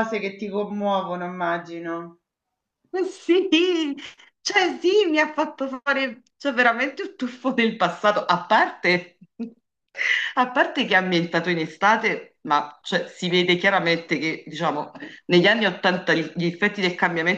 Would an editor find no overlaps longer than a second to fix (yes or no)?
yes